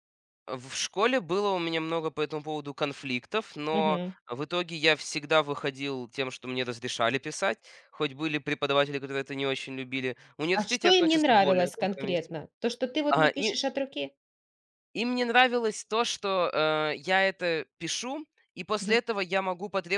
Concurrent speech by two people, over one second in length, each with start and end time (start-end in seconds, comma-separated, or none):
10.5-12.3